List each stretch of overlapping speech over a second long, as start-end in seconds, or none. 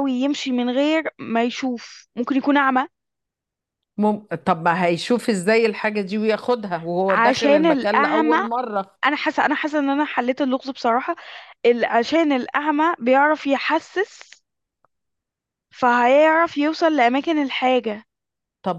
7.1-8.4